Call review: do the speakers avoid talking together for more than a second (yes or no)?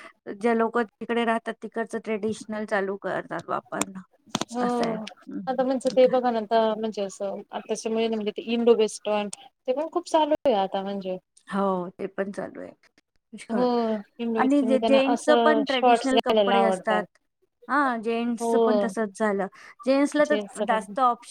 no